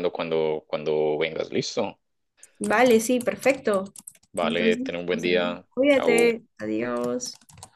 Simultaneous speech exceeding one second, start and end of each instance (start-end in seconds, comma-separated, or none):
4.4-6.4